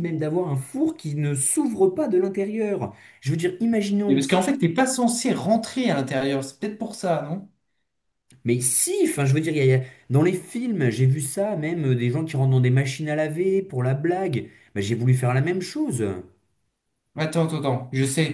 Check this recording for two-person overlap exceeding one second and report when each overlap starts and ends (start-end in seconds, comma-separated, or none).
none